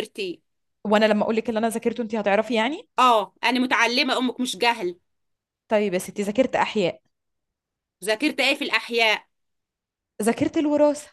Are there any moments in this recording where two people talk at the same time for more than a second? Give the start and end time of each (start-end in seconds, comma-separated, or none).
none